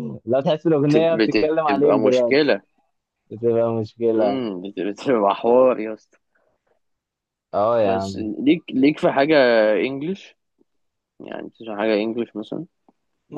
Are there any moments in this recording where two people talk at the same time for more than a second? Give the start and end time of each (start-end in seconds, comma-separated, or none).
0.9-2.5